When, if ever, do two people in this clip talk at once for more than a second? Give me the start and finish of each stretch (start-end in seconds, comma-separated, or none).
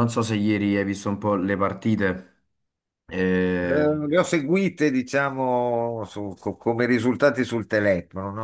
none